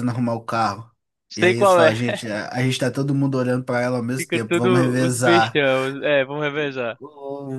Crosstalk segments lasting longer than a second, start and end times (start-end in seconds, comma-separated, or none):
4.2-5.6